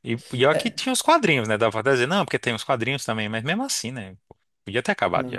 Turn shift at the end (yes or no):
yes